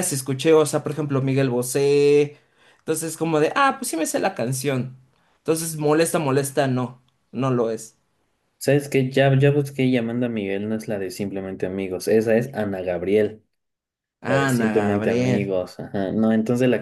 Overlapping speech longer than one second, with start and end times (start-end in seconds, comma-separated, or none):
14.2-15.5